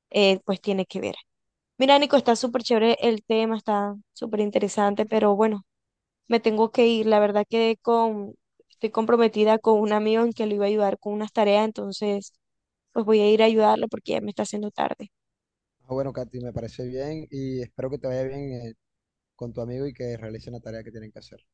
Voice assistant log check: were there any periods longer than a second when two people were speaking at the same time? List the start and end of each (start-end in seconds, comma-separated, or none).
none